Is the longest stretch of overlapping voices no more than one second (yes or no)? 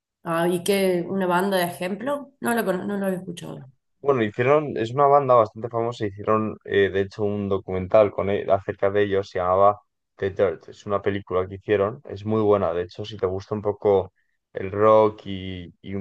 yes